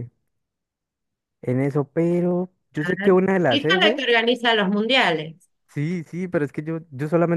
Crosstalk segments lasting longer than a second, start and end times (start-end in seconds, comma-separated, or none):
none